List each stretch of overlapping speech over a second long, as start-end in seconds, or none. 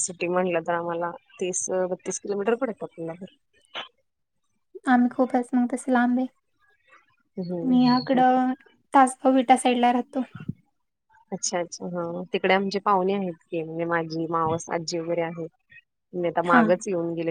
none